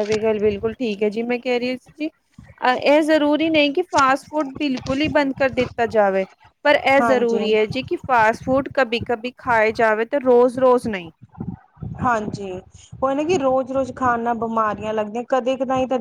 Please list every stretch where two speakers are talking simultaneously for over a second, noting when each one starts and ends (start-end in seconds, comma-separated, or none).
none